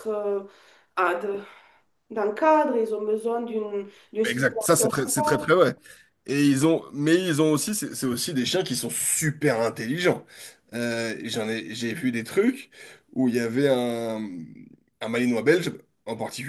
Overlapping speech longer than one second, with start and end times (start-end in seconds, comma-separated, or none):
4.2-5.5